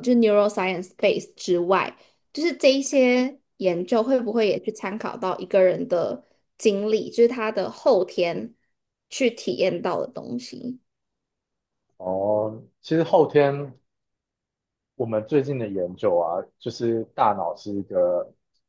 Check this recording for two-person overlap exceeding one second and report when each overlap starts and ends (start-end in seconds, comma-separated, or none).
none